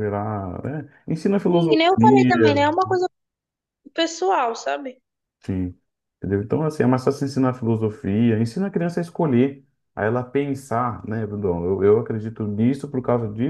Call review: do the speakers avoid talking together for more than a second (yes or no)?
no